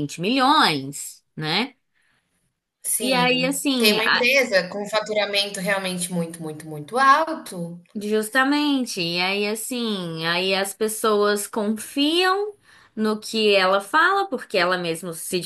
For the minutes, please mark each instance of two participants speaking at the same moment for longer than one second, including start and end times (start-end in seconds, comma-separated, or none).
3.0-4.3